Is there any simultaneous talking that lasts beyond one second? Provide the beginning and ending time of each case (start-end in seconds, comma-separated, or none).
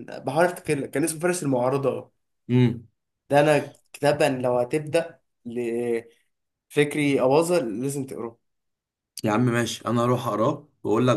none